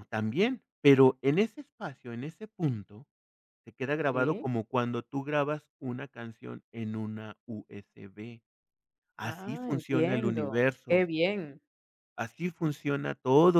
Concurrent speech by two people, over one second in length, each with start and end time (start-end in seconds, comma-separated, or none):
9.2-11.1